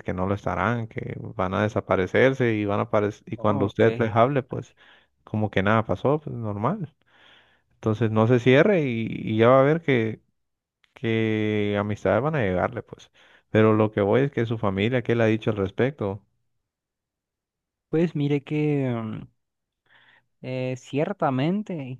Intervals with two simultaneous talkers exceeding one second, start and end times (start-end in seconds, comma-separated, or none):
3.4-4.7